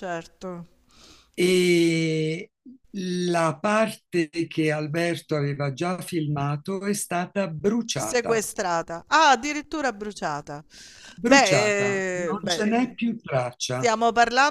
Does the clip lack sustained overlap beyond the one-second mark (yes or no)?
no